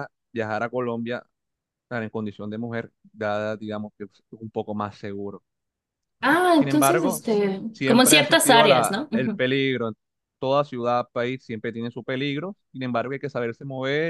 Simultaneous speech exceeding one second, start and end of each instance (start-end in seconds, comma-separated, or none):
6.5-9.4